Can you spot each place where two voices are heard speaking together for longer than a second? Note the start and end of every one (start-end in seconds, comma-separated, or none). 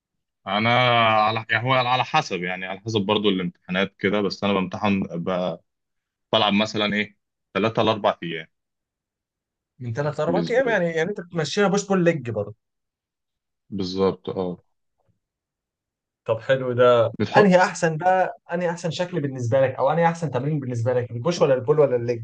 none